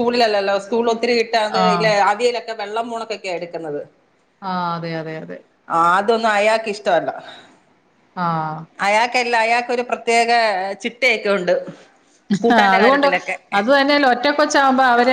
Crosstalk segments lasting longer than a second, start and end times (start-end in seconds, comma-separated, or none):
none